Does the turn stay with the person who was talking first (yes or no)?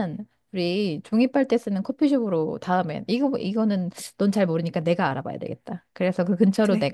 yes